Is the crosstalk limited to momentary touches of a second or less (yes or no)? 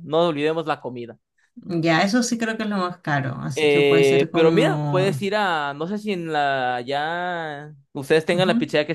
no